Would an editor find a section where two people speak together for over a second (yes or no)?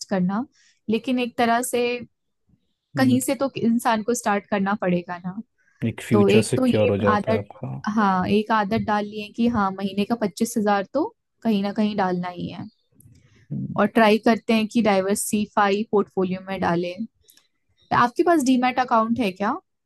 yes